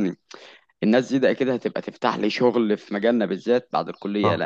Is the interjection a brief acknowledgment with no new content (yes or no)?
yes